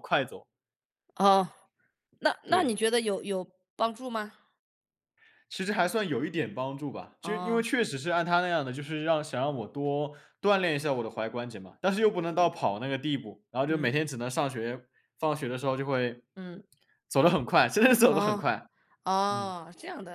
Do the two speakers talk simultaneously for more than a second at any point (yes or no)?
no